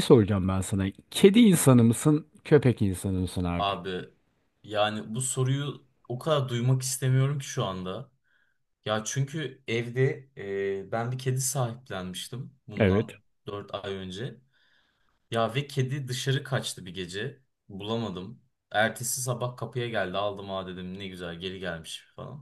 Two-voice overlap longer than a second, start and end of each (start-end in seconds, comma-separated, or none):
none